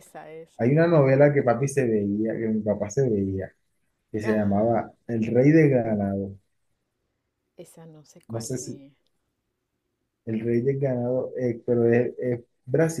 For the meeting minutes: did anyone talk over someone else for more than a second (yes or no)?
no